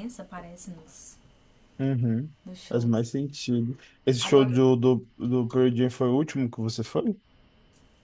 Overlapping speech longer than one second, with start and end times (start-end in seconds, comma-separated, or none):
none